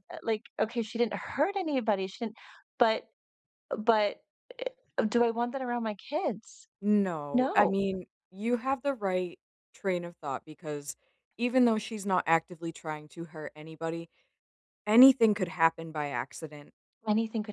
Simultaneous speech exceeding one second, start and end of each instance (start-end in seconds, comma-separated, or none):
none